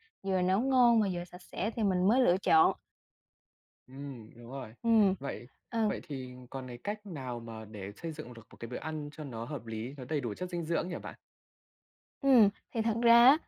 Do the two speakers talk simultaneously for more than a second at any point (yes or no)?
no